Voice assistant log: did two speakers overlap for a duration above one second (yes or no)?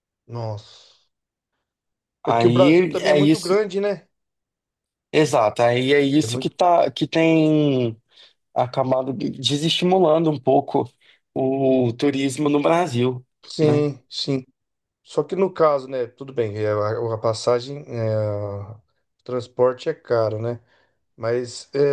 yes